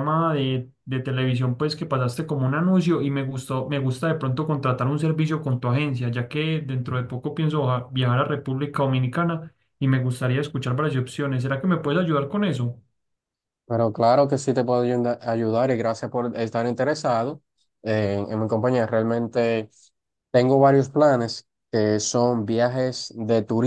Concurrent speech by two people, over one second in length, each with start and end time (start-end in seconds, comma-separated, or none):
none